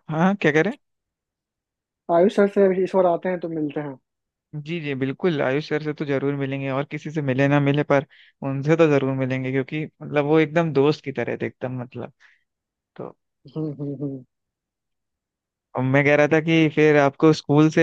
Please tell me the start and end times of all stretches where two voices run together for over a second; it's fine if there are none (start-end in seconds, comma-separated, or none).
none